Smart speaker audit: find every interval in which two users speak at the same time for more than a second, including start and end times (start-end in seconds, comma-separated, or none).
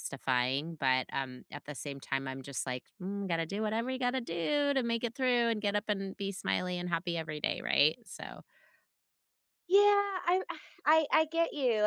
none